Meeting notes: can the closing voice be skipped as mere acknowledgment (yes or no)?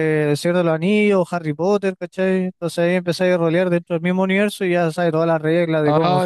no